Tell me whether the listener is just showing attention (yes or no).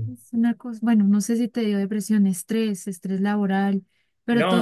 no